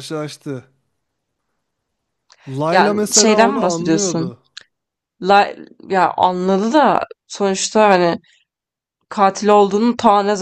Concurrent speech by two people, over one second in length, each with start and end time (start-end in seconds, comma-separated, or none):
2.7-4.3